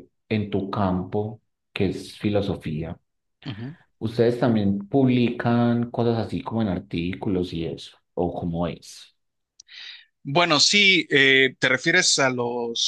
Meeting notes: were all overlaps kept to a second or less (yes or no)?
yes